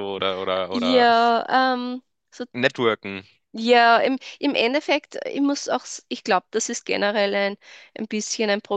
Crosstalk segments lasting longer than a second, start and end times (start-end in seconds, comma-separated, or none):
none